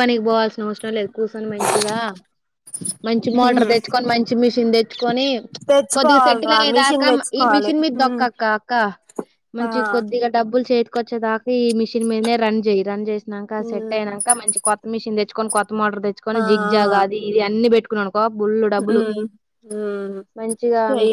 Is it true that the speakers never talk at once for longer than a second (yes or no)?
no